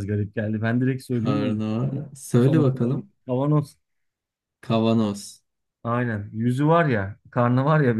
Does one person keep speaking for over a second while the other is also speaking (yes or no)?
yes